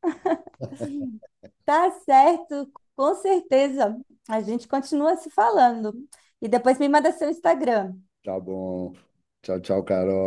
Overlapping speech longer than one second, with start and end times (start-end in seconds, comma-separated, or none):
none